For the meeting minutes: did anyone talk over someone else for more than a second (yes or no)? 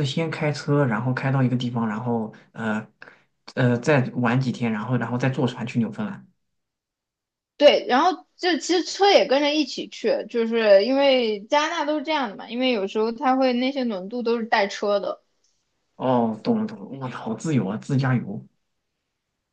no